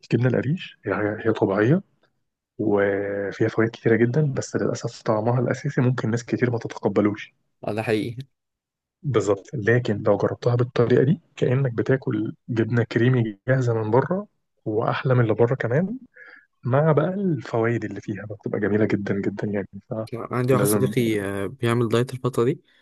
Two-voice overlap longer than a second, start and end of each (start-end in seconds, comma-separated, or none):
none